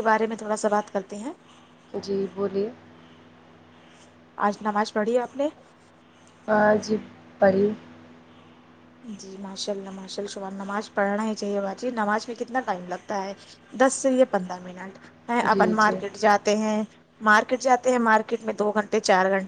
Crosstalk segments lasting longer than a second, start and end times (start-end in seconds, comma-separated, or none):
none